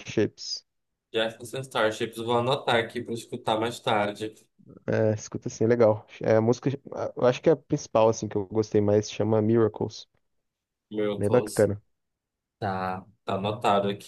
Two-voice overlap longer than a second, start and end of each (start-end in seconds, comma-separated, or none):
none